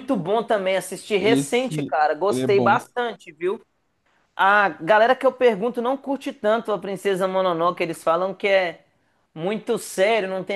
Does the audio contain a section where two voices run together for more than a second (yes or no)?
yes